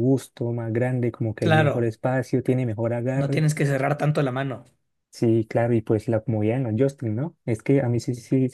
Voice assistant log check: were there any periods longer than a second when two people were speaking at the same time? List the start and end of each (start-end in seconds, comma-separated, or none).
none